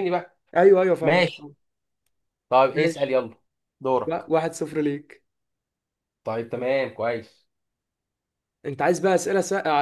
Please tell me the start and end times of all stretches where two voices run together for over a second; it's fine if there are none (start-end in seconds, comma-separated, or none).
none